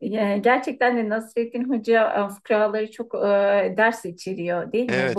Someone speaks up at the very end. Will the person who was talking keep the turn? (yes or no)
yes